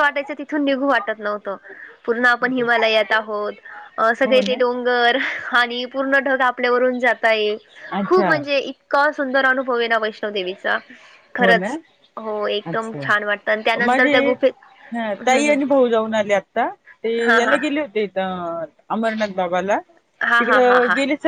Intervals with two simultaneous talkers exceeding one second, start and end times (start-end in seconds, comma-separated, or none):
none